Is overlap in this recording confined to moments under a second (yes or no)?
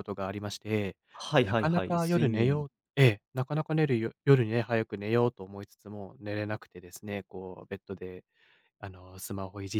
no